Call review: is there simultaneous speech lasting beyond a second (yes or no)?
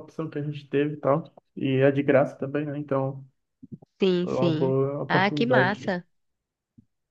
yes